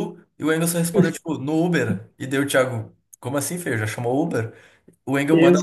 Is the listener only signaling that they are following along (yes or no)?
yes